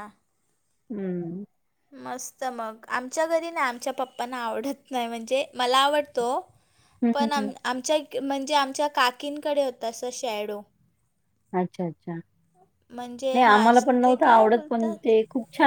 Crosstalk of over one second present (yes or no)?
yes